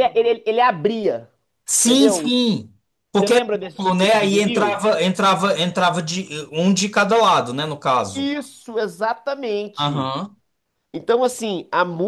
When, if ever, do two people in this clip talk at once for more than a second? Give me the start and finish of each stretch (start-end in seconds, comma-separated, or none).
3.1-4.8